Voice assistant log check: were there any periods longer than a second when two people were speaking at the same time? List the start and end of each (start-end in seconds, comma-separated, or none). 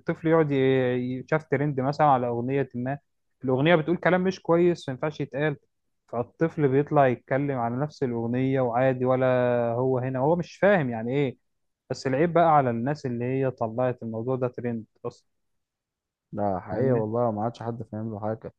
none